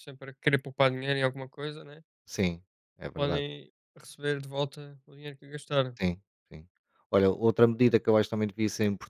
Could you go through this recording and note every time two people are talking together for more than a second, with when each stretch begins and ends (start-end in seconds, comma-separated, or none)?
none